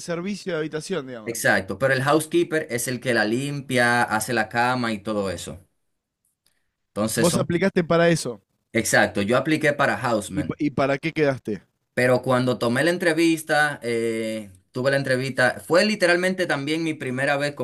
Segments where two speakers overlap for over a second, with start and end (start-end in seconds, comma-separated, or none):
none